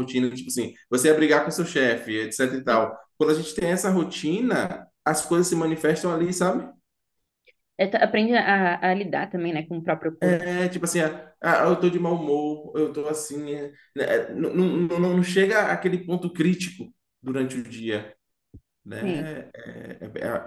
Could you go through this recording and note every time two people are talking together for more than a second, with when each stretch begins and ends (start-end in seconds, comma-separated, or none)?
none